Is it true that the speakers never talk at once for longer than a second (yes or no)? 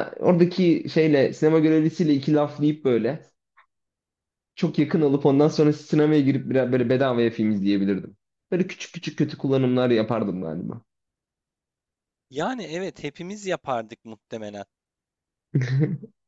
yes